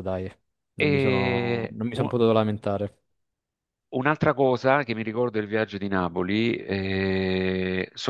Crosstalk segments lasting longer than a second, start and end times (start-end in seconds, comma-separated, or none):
0.8-2.1